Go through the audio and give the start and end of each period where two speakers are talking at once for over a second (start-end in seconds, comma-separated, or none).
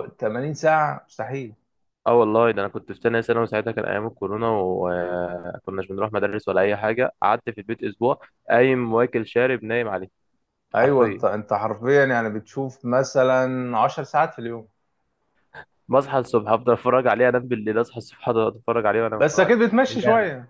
none